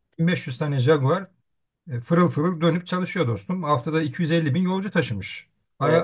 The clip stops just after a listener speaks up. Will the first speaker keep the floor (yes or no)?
yes